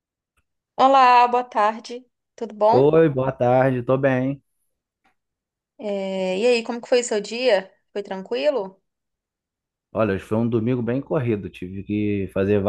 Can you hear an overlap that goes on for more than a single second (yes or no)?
no